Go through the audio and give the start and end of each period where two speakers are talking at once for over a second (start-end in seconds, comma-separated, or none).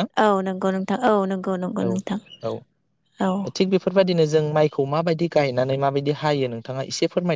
none